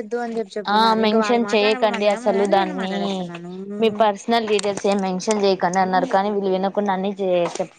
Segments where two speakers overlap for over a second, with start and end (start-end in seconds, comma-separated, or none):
0.8-2.9